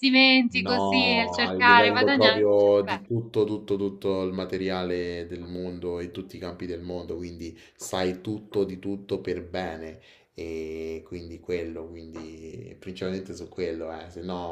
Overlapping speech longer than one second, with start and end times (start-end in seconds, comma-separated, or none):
0.5-3.0